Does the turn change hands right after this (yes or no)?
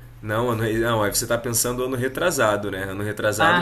no